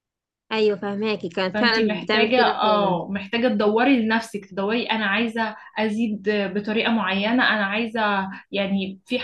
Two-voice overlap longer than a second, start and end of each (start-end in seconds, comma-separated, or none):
1.5-3.0